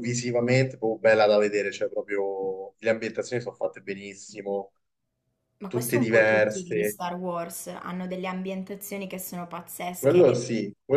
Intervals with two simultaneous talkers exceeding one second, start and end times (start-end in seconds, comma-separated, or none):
5.7-7.0